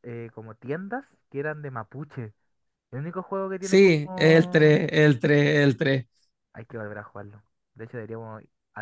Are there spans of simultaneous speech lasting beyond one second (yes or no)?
yes